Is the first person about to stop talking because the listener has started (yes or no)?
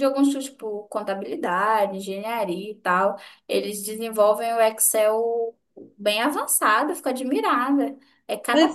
yes